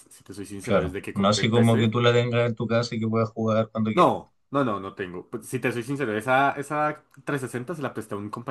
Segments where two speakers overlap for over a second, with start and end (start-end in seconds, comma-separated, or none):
0.6-1.9